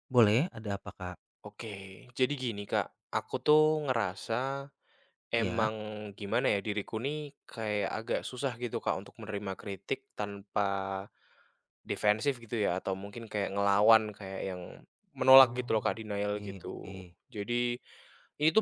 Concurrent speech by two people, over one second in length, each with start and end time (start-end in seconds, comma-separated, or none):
15.4-16.9